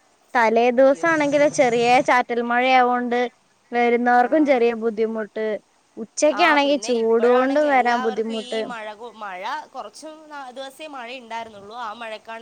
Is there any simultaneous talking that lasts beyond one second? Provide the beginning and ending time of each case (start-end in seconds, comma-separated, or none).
6.4-8.6